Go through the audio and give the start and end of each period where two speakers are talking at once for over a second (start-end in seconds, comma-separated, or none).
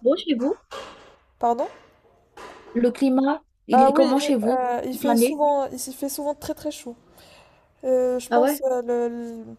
3.7-5.4